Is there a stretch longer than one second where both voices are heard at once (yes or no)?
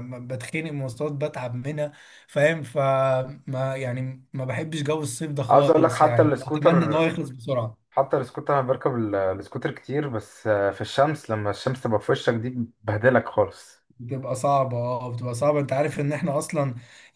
yes